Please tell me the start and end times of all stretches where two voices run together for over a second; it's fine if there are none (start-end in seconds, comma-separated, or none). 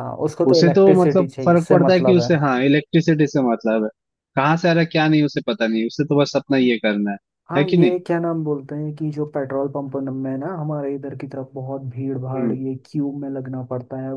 0.5-2.3